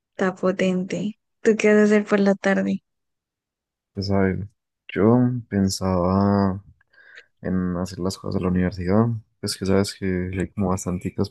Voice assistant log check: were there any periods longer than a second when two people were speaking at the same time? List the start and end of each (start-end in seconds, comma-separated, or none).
none